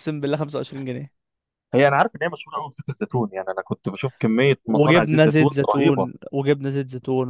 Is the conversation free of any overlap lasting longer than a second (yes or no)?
no